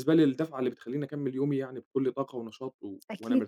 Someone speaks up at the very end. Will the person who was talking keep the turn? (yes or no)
no